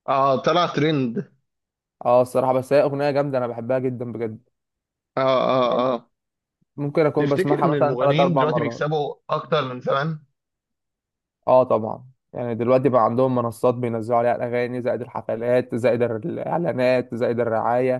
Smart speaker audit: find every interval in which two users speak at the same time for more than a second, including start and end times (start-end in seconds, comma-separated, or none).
7.2-8.8